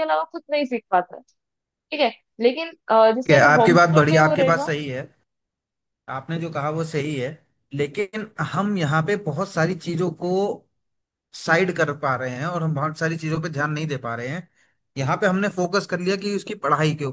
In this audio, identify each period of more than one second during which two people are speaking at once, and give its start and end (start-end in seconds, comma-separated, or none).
3.3-4.7